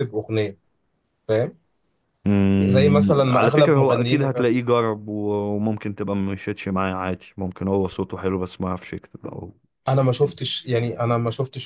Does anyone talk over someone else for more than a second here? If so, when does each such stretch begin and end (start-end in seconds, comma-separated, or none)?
2.6-4.3